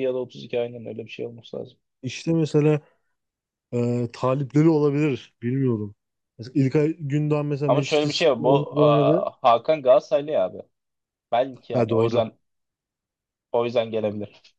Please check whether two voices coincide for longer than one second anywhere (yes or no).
yes